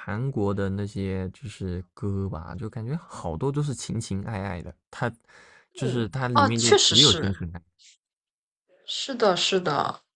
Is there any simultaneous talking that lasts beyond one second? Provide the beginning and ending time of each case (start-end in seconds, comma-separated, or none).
5.8-7.3